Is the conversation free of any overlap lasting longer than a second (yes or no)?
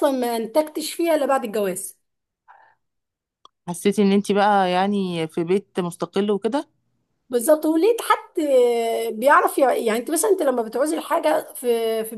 yes